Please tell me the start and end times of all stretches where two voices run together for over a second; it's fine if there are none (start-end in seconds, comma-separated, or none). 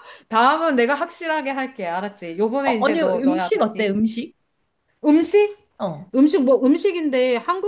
2.6-4.0